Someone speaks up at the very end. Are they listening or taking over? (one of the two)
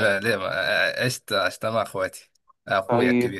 taking over